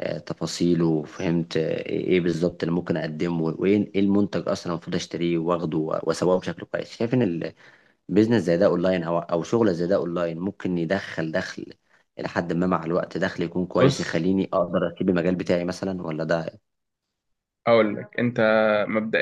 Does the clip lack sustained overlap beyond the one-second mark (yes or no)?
yes